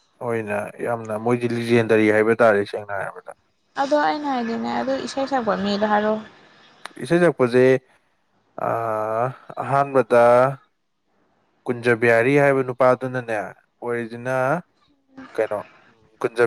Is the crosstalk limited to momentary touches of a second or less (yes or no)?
yes